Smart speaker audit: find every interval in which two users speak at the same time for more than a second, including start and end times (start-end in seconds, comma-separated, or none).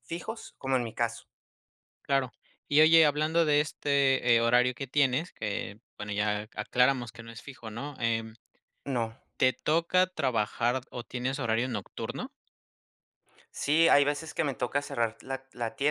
none